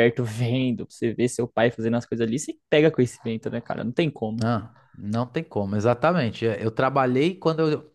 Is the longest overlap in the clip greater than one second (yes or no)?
no